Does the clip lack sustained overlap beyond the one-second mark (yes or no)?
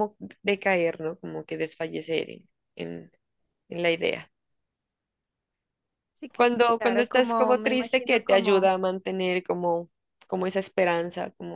no